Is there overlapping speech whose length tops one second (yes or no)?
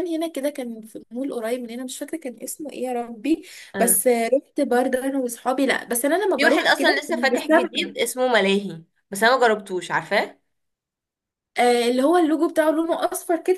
yes